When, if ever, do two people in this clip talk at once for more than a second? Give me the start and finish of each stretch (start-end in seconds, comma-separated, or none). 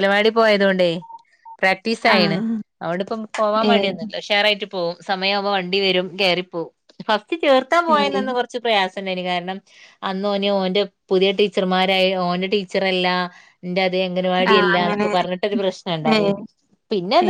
none